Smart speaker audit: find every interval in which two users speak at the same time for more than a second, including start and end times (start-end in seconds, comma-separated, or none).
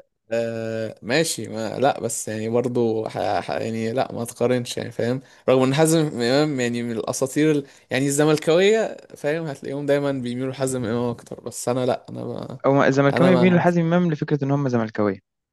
none